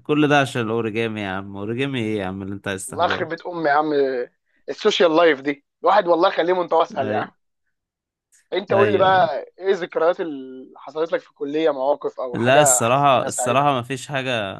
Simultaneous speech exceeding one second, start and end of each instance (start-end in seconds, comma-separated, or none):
12.3-13.7